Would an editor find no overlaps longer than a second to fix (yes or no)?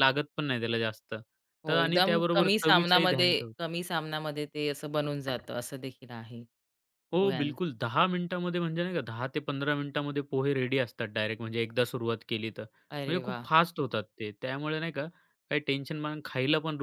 no